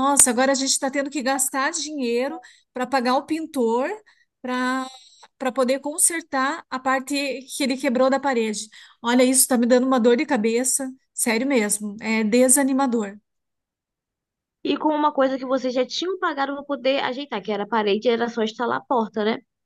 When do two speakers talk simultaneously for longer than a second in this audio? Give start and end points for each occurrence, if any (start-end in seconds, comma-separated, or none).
none